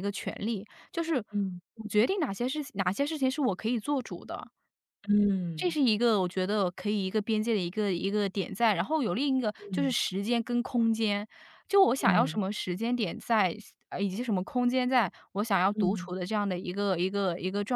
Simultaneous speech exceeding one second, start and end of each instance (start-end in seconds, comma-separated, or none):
none